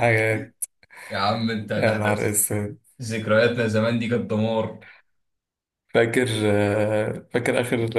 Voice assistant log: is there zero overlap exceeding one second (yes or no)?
yes